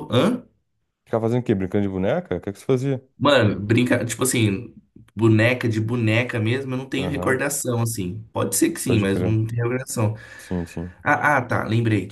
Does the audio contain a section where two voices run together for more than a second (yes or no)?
no